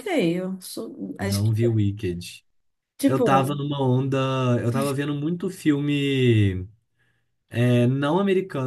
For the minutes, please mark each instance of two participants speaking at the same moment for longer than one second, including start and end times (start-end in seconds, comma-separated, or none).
none